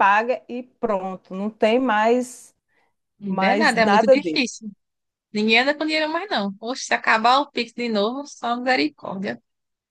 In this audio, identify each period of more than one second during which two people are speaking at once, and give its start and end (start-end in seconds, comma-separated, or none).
3.2-4.5